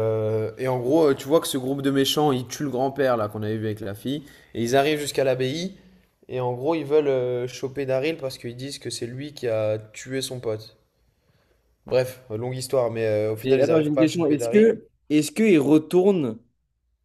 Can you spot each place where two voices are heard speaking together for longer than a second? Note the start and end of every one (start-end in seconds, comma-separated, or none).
13.4-14.7